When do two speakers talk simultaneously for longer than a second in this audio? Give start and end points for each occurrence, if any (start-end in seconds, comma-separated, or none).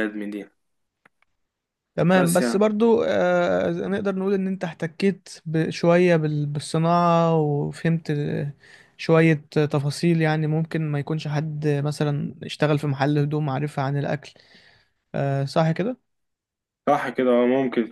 none